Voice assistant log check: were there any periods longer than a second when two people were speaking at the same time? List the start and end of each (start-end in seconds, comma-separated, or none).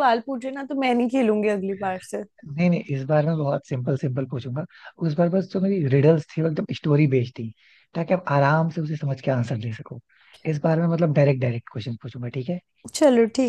none